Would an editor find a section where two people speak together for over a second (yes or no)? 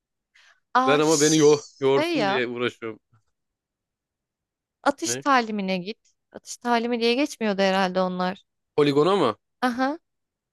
yes